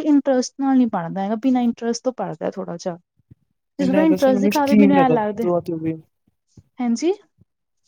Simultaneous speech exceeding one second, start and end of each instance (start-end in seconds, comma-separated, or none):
3.8-5.5